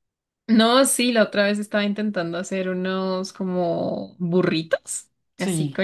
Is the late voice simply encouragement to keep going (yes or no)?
yes